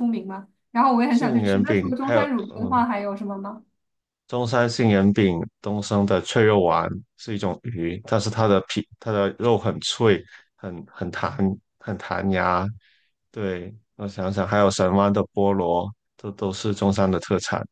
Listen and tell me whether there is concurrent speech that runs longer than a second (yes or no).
yes